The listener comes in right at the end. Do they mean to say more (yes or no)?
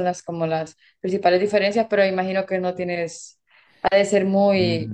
yes